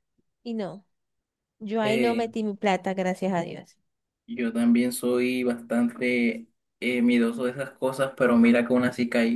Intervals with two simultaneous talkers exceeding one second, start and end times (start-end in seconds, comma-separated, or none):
none